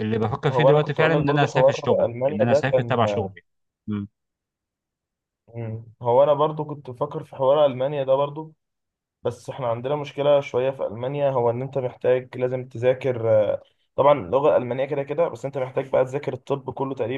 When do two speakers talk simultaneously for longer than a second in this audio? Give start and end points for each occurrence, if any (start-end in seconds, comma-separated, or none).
0.5-3.0